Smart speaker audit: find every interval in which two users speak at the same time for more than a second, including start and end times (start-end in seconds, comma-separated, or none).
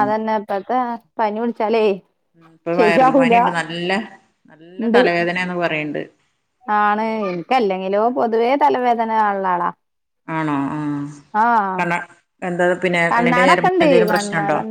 none